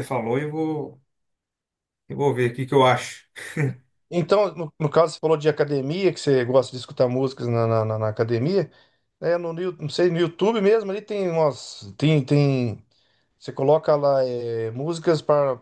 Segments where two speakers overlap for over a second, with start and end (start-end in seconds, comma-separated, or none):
none